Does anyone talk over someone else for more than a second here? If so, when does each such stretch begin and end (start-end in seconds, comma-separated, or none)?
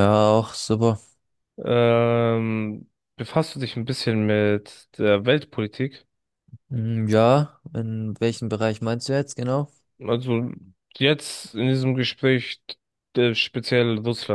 none